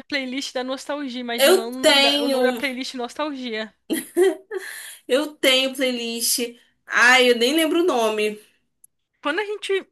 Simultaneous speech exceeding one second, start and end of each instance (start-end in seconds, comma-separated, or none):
1.4-2.6